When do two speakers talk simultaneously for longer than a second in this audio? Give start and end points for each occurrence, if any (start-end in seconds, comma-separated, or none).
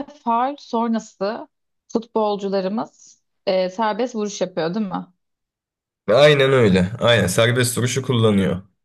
none